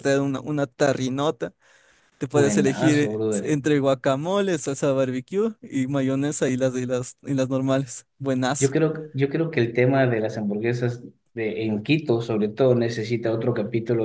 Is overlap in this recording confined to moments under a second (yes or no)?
no